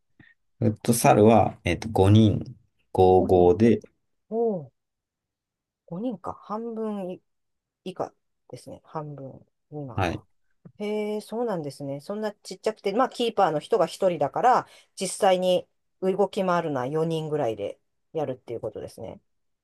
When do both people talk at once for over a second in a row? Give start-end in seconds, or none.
none